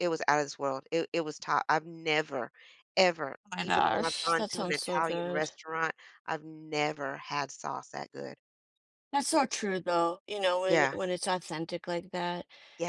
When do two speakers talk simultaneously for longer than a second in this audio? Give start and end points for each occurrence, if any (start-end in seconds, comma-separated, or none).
3.5-5.5